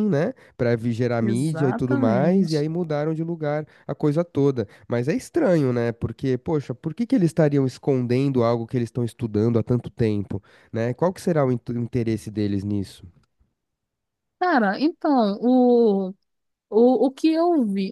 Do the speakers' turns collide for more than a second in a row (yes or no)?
yes